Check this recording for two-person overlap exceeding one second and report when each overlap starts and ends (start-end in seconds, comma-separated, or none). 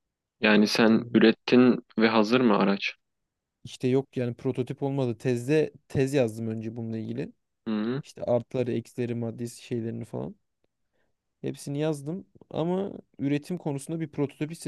none